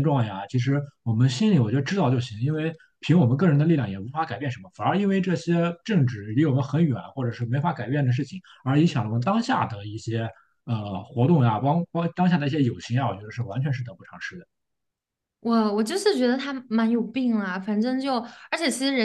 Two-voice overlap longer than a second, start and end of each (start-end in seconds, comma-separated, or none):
none